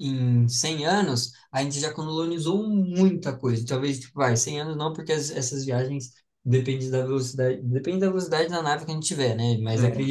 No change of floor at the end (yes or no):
yes